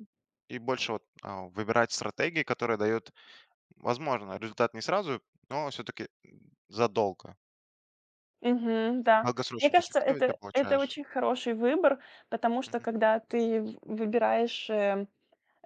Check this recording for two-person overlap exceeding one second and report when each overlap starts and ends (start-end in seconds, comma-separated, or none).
9.2-10.9